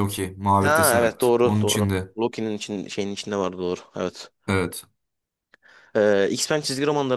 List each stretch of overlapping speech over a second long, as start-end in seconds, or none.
0.6-2.1